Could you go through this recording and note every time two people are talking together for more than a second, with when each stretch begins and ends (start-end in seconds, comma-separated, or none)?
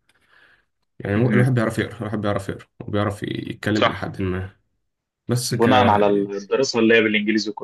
none